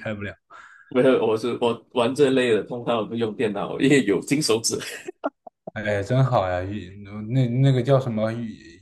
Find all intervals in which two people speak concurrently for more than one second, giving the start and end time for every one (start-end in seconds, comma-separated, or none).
none